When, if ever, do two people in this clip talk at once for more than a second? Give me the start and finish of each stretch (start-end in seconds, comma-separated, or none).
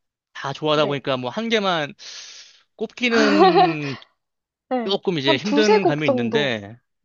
4.8-6.5